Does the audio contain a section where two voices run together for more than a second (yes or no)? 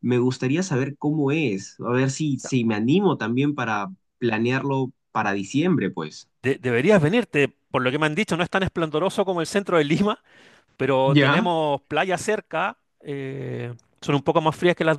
no